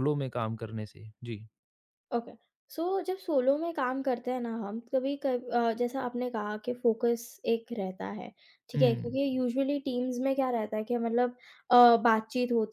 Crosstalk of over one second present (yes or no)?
no